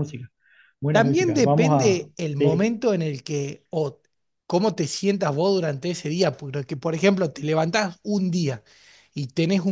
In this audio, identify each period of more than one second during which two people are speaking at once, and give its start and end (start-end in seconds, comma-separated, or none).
0.9-2.8